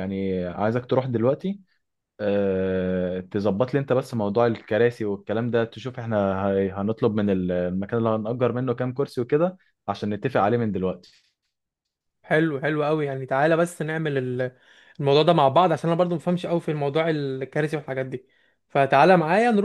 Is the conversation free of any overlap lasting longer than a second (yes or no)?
yes